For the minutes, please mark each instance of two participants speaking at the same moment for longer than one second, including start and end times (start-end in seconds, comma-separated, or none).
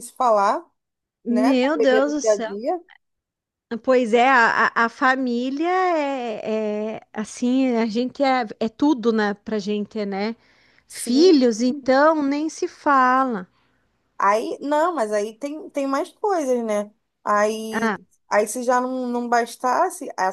1.3-2.6